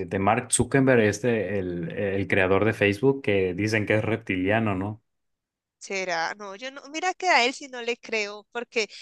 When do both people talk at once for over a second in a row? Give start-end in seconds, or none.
none